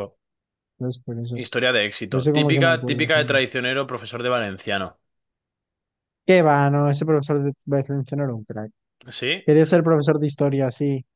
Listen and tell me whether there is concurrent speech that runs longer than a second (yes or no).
yes